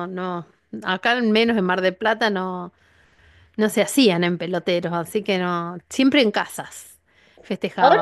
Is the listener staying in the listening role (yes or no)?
no